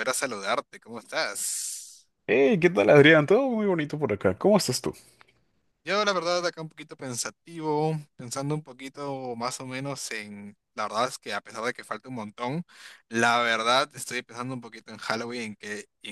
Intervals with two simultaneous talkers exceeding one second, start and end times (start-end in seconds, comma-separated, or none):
none